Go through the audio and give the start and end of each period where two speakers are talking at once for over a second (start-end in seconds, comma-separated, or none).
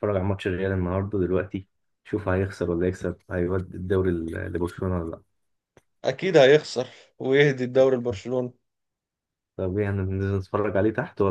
none